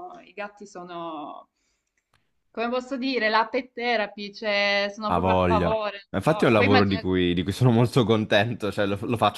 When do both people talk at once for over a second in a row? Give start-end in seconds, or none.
5.0-7.0